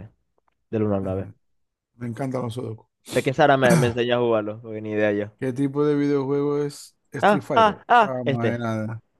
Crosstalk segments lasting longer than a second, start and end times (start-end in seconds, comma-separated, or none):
7.2-8.6